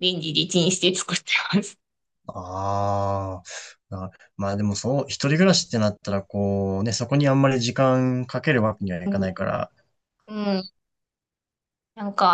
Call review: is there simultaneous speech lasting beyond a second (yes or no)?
no